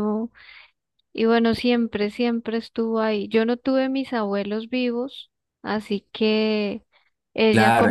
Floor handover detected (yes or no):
yes